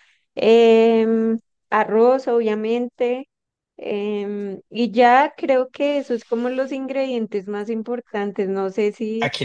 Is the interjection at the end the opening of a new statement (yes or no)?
yes